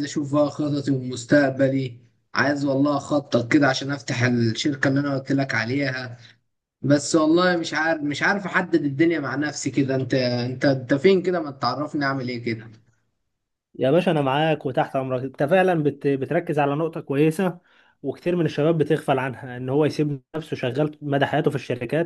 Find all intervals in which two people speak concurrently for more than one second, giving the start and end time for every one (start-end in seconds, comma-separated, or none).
none